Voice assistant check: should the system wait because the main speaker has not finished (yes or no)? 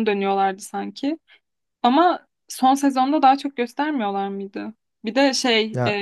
yes